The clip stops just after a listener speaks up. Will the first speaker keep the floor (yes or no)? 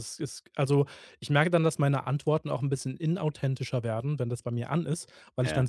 yes